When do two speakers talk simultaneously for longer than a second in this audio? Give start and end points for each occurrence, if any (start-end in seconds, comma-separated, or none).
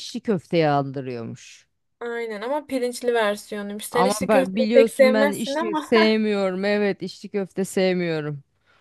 3.9-5.9